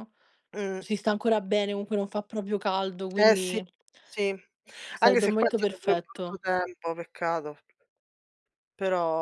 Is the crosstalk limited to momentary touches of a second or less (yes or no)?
no